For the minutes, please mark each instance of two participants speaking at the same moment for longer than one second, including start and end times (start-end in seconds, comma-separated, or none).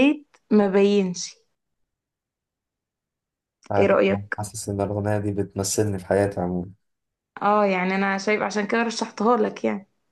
none